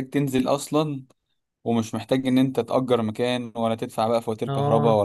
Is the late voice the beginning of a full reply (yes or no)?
no